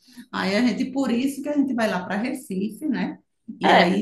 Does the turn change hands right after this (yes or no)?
yes